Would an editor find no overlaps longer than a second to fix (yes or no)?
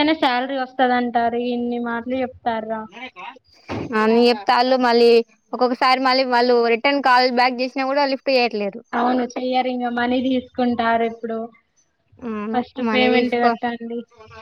yes